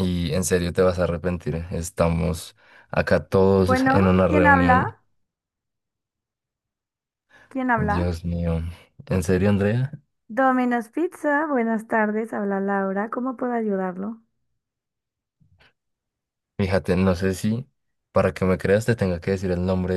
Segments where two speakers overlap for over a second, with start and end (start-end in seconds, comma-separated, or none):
3.6-4.9